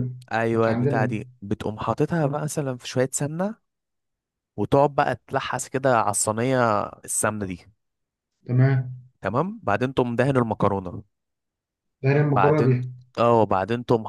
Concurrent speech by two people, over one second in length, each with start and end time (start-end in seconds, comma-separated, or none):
none